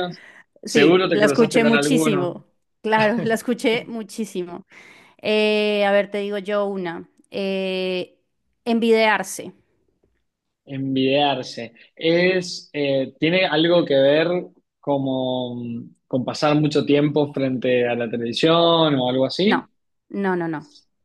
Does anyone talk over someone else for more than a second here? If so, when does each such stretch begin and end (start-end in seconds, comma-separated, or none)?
0.6-2.4